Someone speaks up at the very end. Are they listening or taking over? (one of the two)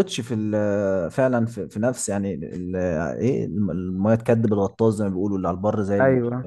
taking over